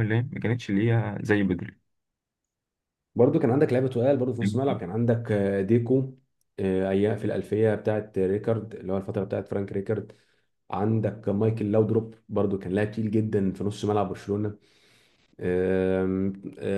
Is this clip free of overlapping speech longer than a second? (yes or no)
yes